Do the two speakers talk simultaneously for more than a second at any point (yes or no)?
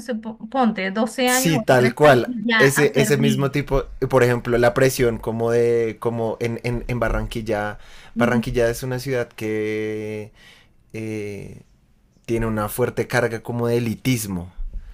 yes